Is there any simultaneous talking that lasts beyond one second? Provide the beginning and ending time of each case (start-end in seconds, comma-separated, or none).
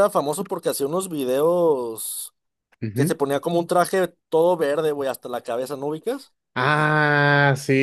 none